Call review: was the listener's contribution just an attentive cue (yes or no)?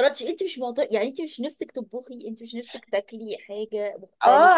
no